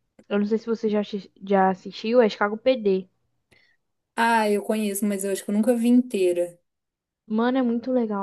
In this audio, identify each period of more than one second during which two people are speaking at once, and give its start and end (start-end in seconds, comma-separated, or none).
none